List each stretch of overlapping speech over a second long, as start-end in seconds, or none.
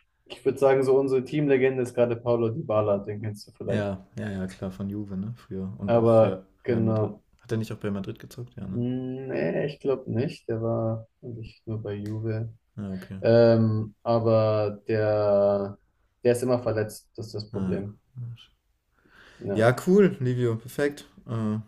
5.8-7.2